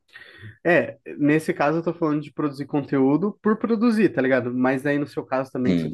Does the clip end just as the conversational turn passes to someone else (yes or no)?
no